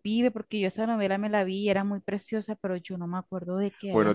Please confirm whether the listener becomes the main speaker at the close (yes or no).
yes